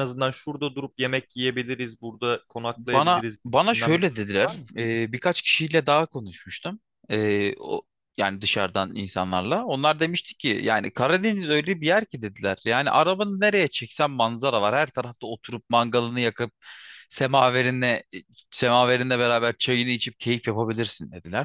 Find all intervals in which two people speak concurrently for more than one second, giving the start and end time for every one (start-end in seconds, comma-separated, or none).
2.8-4.7